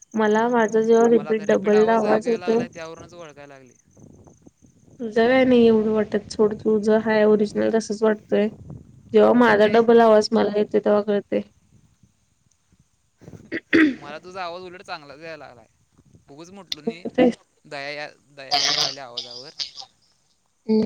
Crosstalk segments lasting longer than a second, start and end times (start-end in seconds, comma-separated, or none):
none